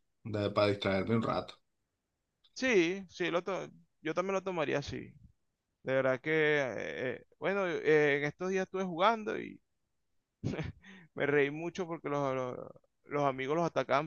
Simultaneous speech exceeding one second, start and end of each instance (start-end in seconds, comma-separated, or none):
none